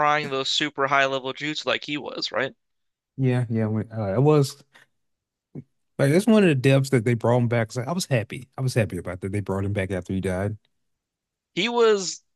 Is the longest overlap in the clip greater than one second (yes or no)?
no